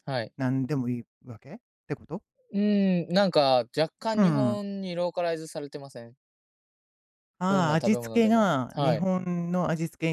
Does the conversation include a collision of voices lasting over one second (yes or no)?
yes